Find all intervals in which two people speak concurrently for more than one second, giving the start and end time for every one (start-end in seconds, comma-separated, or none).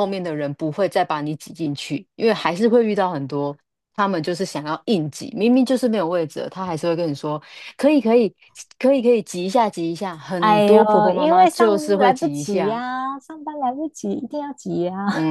10.4-12.8